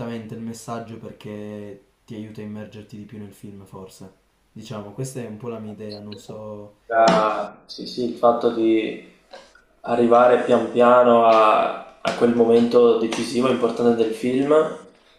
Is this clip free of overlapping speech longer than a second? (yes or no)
yes